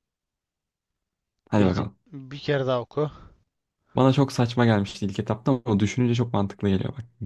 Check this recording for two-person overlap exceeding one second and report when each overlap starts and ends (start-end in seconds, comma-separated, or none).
none